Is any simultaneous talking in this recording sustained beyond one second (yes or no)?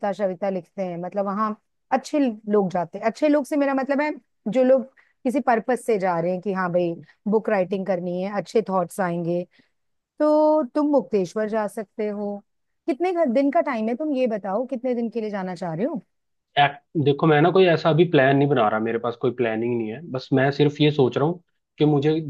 no